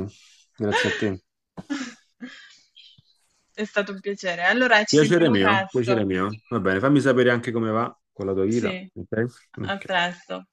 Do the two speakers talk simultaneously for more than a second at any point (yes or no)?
yes